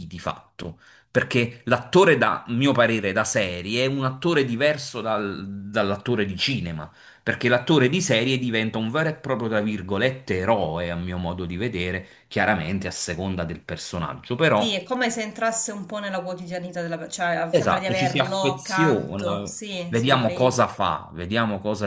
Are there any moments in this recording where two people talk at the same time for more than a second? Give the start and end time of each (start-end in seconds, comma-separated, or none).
17.5-20.6